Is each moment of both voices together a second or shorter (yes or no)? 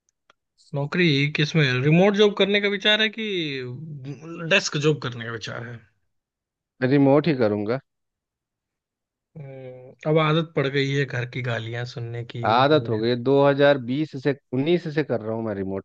yes